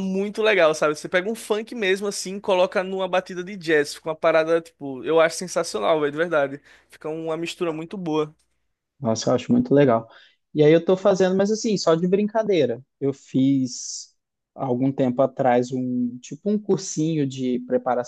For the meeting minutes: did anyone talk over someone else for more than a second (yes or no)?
no